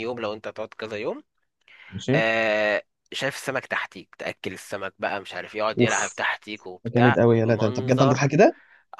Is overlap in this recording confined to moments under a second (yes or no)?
no